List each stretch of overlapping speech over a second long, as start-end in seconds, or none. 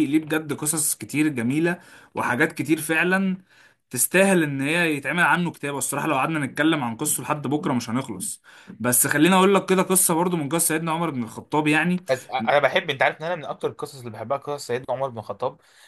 none